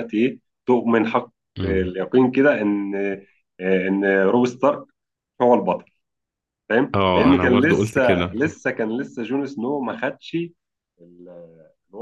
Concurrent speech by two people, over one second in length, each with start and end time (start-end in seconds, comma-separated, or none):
6.9-8.4